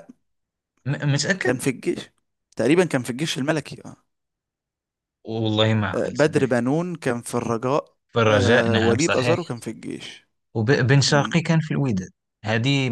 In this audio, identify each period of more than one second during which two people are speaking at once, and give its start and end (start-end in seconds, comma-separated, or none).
8.1-9.5